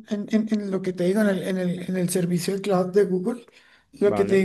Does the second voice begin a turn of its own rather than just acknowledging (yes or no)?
no